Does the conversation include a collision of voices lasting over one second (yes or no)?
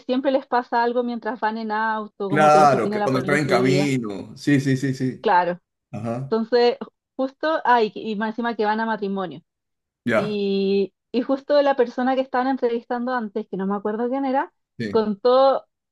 yes